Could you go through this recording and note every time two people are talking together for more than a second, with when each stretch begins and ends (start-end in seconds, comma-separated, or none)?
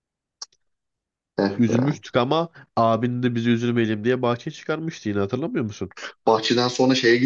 none